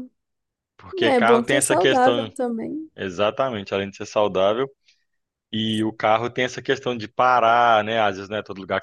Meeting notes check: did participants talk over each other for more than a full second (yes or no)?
yes